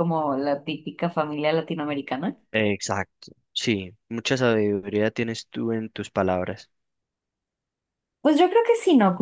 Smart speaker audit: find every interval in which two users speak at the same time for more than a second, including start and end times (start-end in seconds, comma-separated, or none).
none